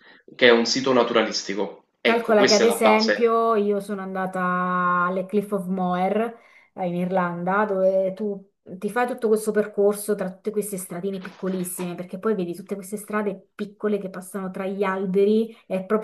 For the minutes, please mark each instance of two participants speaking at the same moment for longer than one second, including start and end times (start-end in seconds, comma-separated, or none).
2.0-3.3